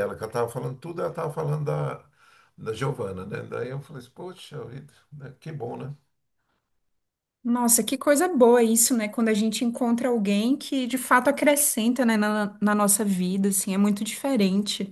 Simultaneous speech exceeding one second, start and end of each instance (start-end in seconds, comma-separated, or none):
none